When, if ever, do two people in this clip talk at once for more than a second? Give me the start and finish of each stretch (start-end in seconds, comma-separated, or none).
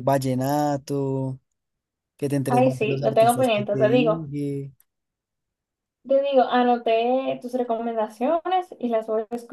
2.5-4.3